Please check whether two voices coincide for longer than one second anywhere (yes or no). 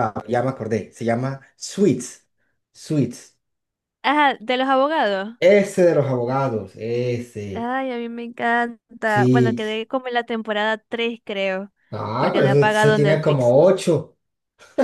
yes